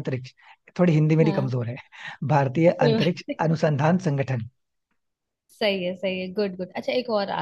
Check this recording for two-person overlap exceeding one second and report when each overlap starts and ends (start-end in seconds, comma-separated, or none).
none